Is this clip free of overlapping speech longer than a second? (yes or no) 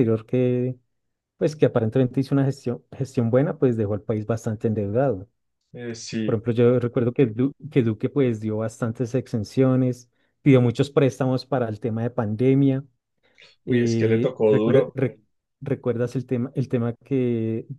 no